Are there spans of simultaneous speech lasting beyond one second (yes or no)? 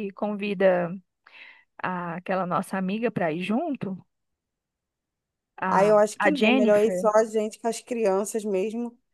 yes